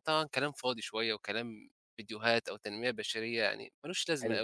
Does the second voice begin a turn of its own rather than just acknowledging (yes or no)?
yes